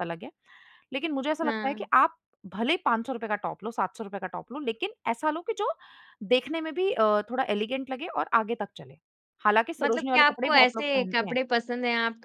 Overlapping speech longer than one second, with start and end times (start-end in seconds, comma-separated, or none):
9.8-11.3